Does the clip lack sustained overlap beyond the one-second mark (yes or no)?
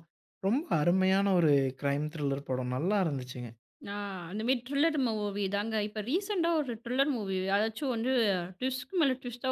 yes